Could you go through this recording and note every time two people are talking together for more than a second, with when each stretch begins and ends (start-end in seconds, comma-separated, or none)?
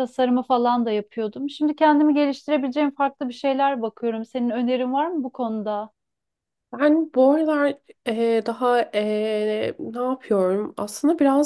none